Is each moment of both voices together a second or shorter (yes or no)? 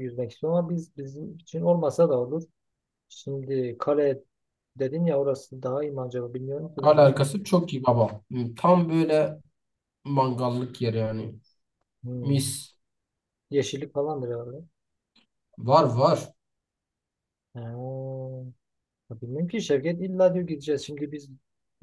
yes